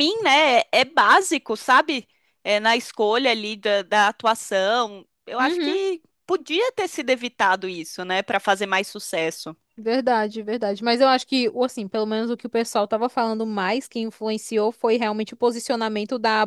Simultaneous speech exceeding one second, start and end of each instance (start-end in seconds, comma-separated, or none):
none